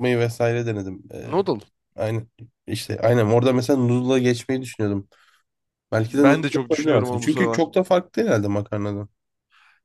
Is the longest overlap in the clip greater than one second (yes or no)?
yes